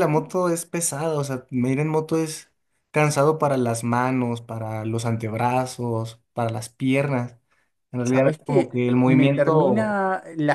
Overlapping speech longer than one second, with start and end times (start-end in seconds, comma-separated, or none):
8.0-10.0